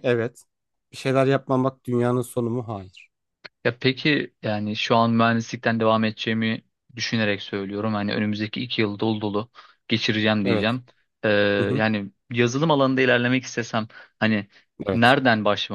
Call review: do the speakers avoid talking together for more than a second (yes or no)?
yes